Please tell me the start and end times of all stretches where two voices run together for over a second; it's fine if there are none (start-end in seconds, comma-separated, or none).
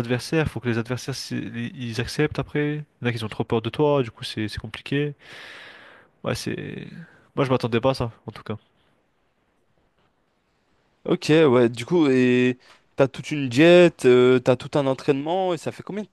none